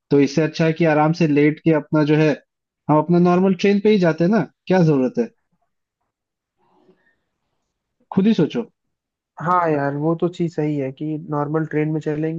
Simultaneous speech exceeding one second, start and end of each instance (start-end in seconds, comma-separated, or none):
none